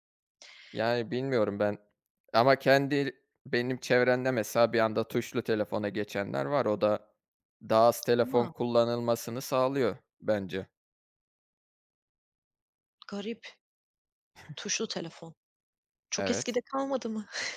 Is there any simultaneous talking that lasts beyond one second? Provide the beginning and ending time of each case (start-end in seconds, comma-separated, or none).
none